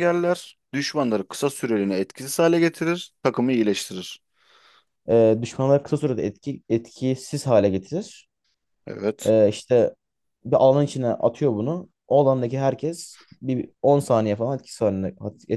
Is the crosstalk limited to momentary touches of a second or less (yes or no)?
yes